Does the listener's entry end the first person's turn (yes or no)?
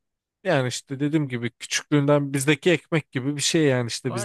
yes